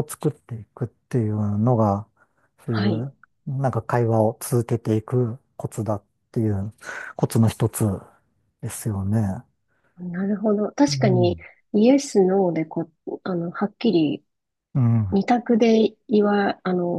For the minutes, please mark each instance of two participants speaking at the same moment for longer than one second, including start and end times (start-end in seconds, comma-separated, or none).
none